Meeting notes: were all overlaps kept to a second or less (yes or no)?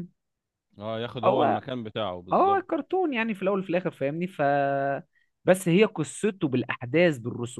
yes